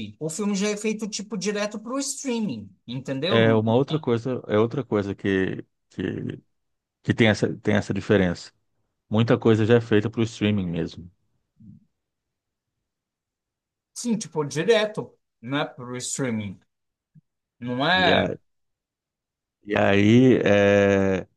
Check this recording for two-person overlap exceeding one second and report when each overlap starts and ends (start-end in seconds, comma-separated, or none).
none